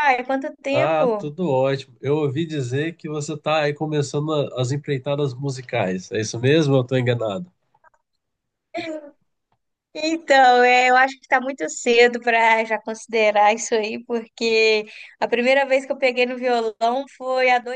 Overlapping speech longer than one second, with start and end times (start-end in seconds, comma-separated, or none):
none